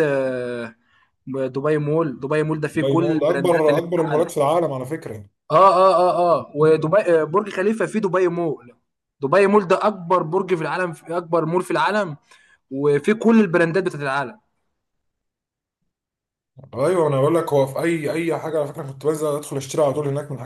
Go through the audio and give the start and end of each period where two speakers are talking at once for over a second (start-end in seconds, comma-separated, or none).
2.7-4.3